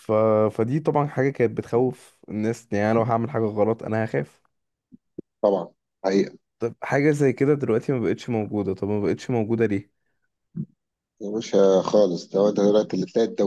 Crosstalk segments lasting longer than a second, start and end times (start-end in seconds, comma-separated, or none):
none